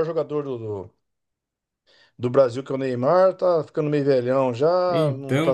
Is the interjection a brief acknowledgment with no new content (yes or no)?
yes